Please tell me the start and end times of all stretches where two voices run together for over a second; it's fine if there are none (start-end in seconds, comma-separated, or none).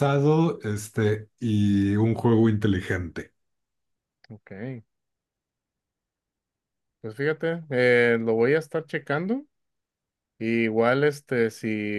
none